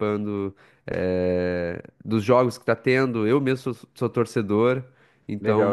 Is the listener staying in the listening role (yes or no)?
no